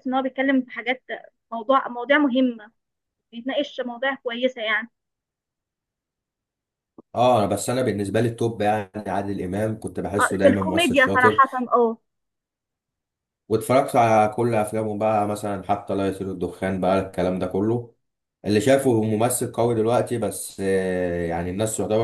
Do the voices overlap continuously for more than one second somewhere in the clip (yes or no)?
yes